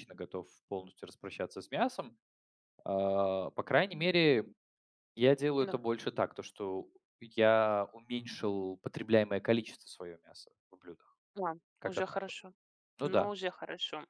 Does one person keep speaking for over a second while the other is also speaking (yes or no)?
no